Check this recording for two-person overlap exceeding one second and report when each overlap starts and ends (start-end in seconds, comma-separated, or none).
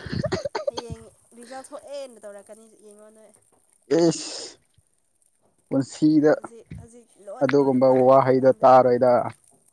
7.4-9.1